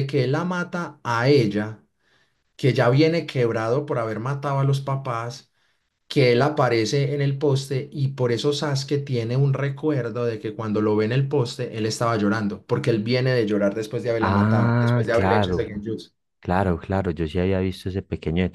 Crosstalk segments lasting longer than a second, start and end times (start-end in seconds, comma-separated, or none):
14.2-15.7